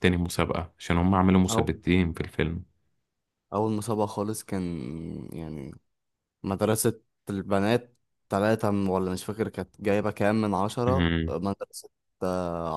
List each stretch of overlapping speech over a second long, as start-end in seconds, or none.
none